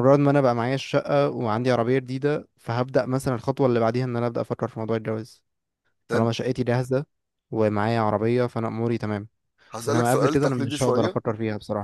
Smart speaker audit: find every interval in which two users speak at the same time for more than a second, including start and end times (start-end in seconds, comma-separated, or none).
9.9-11.2